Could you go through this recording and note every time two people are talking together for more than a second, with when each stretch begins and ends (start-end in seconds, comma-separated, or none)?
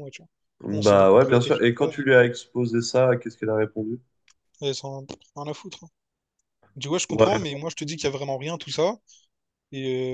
0.7-2.1